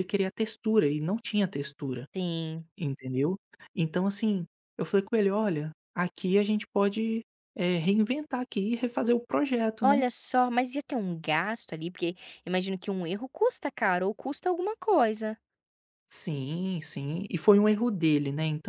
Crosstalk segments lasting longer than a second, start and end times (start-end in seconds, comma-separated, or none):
none